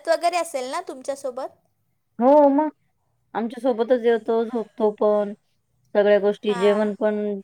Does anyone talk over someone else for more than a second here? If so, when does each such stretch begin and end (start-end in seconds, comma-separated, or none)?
none